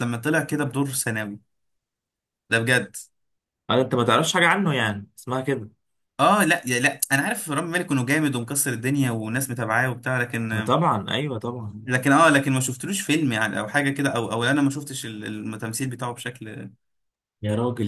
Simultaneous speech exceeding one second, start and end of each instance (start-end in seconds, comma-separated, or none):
none